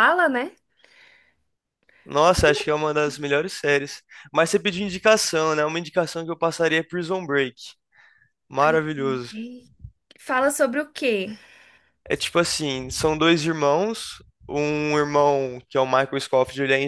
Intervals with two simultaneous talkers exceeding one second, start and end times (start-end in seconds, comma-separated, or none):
none